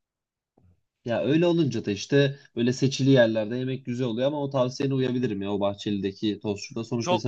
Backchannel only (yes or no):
no